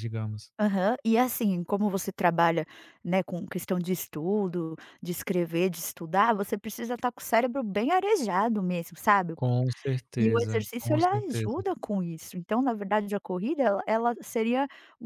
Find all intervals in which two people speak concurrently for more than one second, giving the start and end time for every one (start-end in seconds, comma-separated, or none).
10.2-11.6